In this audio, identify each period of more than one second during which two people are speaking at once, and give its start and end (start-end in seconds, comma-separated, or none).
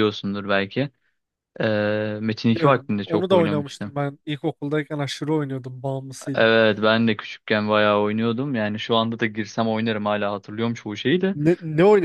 2.5-4.0